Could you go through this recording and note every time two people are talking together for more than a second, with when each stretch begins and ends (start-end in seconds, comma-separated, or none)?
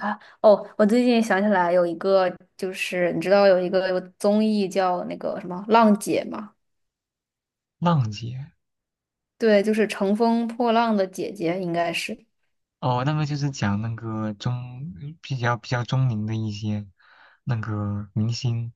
none